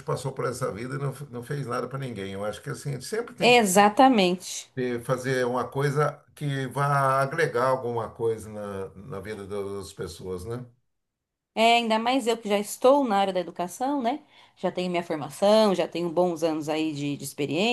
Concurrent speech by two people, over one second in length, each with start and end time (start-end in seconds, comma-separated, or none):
none